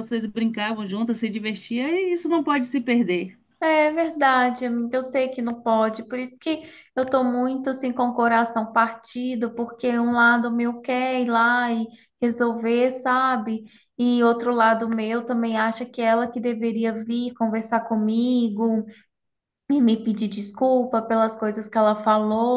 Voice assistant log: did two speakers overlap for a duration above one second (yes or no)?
no